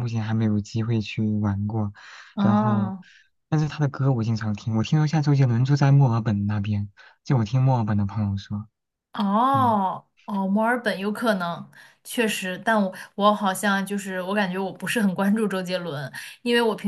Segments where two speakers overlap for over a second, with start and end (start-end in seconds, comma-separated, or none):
none